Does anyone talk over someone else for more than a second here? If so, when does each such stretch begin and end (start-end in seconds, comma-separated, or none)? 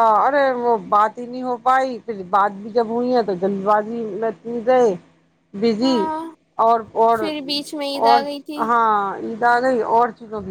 none